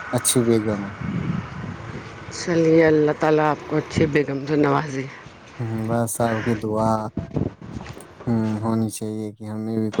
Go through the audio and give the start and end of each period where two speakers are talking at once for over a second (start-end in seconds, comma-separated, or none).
none